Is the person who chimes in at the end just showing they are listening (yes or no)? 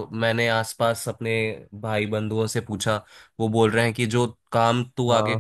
yes